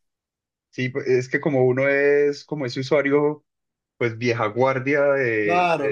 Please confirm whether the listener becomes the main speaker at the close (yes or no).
yes